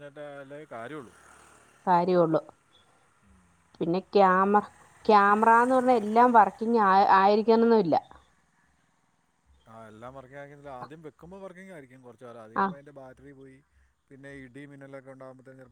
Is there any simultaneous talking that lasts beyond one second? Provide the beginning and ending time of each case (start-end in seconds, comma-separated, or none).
none